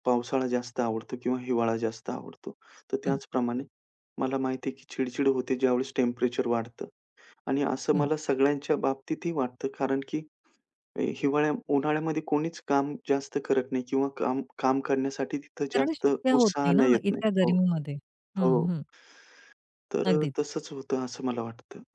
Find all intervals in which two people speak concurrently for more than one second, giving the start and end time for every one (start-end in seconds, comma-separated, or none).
15.7-17.5